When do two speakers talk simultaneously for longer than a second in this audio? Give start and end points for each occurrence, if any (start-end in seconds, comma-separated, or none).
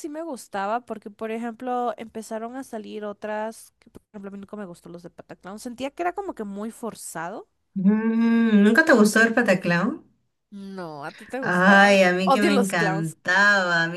11.4-13.2